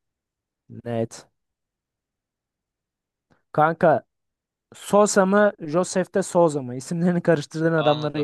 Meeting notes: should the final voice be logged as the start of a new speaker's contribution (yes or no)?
yes